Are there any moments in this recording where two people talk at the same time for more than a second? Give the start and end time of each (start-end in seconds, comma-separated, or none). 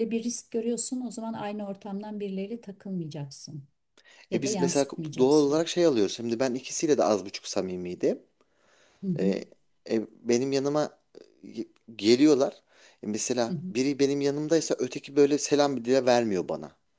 4.3-5.7